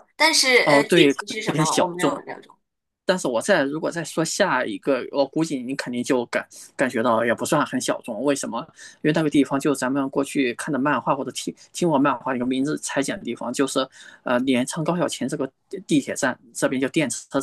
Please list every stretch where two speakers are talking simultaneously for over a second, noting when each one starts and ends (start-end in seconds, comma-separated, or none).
0.6-2.2